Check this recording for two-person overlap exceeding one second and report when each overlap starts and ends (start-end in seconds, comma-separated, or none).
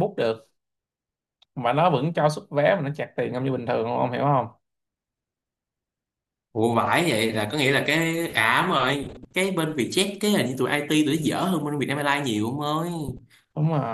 none